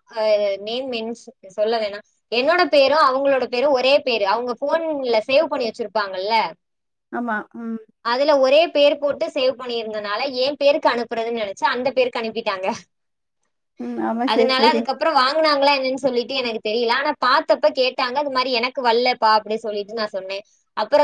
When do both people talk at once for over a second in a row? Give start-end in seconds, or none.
none